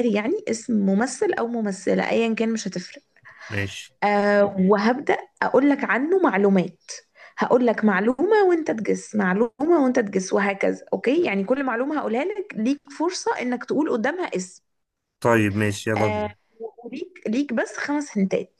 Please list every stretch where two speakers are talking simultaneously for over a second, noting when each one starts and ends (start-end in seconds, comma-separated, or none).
none